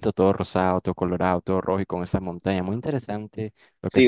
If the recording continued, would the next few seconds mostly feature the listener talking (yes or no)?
yes